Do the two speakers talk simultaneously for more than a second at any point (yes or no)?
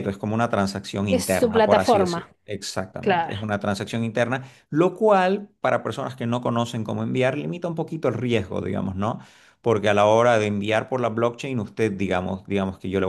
yes